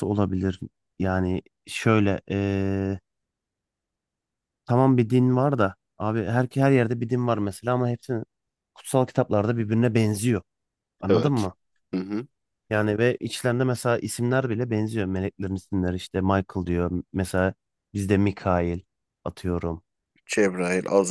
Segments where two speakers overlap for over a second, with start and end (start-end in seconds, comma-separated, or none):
none